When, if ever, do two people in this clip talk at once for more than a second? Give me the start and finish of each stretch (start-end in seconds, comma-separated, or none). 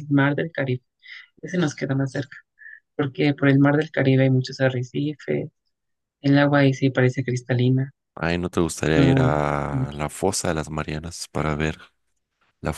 none